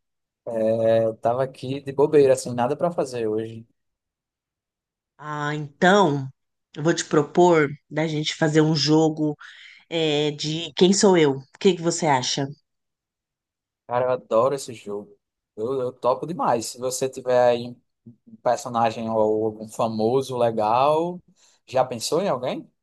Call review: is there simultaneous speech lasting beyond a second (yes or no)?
no